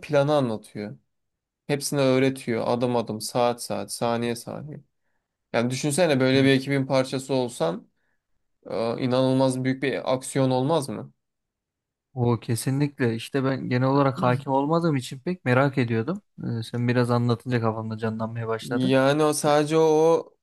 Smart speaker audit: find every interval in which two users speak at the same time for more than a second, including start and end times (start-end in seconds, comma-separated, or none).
none